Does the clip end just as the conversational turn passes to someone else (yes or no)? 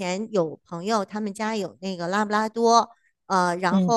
no